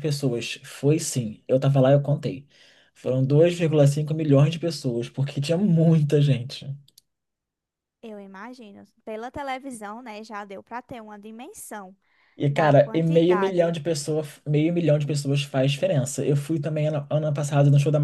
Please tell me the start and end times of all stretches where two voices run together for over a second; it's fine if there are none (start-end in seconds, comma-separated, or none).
12.5-13.8